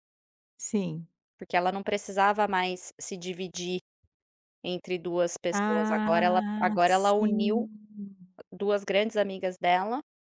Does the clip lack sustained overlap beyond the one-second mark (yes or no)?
no